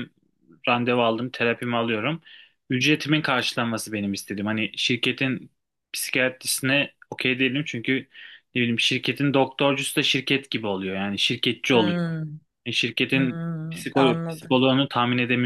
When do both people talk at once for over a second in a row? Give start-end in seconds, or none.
13.1-14.7